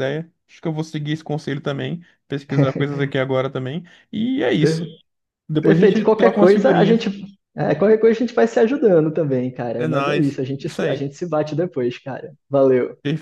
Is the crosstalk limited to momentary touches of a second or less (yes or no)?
no